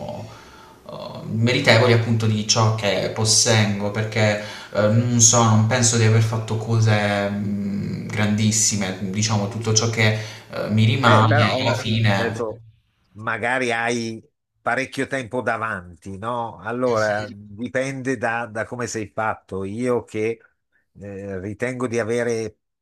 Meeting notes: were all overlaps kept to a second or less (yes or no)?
no